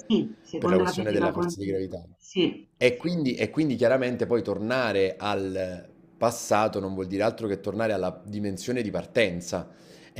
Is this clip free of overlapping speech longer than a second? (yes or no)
no